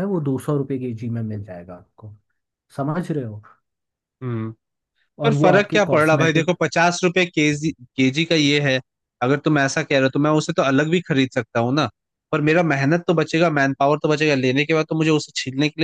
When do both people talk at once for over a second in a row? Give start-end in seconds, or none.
5.2-6.5